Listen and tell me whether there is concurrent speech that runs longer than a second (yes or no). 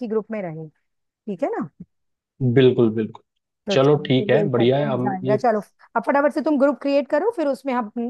yes